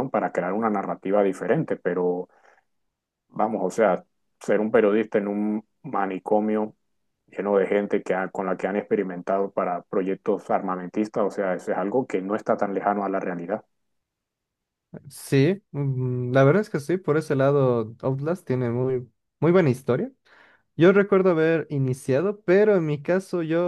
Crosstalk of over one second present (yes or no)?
no